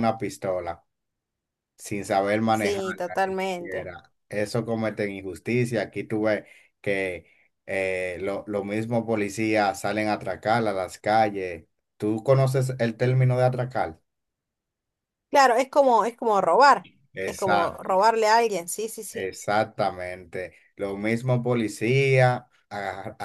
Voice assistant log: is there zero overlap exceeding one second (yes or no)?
no